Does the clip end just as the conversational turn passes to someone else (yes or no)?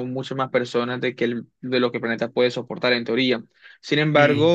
no